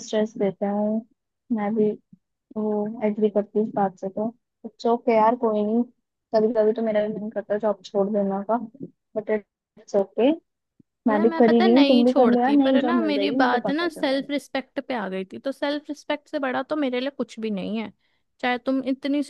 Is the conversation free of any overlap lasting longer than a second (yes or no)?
no